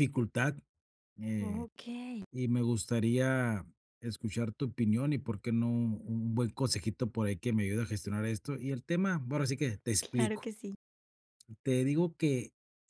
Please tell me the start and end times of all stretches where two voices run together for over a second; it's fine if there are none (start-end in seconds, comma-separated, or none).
none